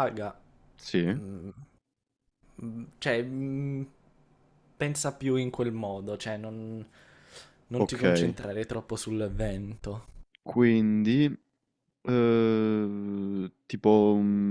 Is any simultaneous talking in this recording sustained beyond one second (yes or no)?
no